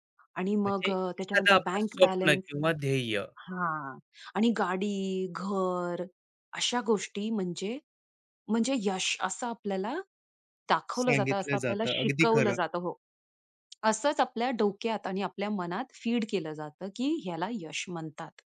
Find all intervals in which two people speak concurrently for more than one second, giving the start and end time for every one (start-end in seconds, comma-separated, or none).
0.7-2.5, 11.0-12.6